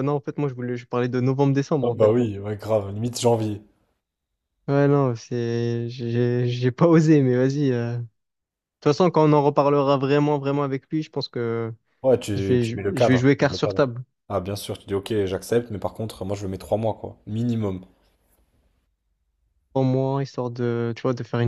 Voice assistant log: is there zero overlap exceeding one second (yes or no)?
no